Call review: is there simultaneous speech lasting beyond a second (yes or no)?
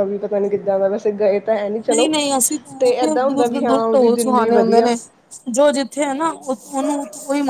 yes